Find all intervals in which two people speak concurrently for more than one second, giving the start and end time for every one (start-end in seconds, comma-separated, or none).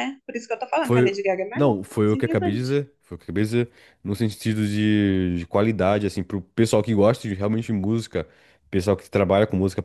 0.8-2.8